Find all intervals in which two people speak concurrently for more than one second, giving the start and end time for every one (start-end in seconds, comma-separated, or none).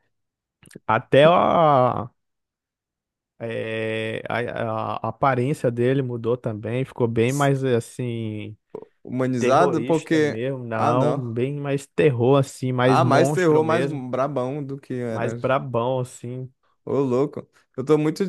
9.4-11.3, 12.8-14.1